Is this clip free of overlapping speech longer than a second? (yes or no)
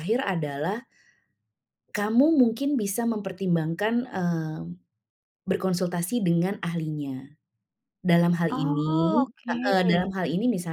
no